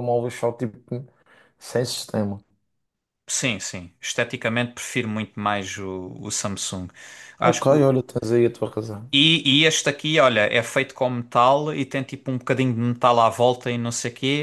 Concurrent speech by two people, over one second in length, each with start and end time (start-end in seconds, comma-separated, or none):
none